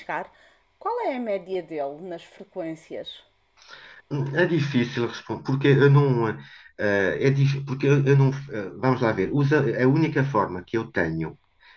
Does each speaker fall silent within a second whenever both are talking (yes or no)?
yes